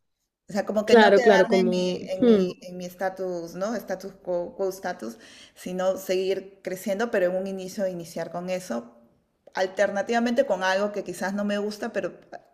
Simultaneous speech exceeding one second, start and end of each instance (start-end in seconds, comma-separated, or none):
0.8-2.5